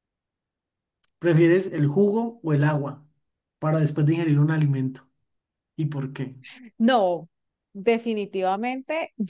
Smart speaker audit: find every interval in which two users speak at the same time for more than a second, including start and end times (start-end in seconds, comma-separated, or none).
none